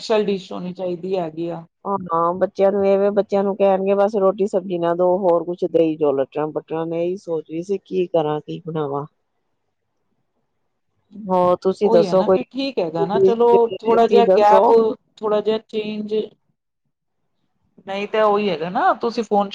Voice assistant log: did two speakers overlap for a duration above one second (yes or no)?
yes